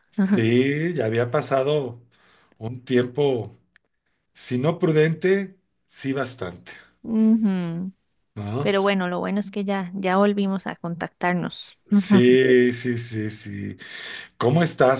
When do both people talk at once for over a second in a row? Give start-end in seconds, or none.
none